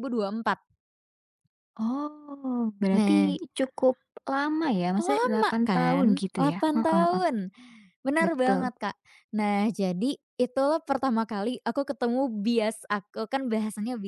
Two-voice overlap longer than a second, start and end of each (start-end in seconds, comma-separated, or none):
5.0-7.2